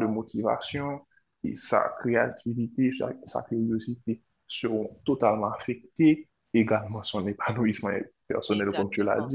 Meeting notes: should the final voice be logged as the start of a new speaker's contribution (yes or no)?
no